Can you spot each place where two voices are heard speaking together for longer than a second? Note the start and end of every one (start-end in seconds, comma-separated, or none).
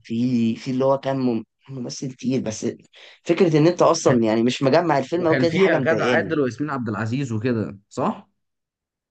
5.2-6.4